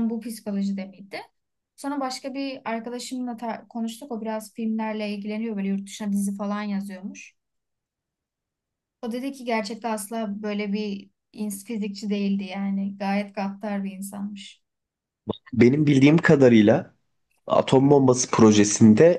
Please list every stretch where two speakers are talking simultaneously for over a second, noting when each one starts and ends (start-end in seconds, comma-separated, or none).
none